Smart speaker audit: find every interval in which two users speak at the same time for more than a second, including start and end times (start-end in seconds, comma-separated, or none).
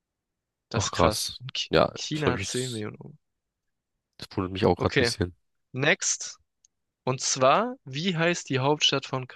0.7-2.9